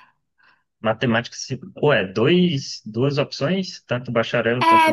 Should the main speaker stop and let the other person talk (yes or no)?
yes